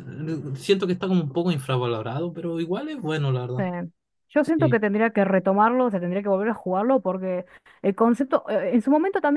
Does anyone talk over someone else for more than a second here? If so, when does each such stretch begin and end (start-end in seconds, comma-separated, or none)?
none